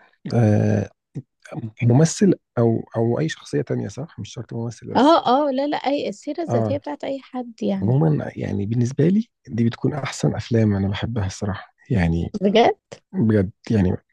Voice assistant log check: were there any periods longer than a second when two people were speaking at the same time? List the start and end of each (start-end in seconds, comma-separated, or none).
none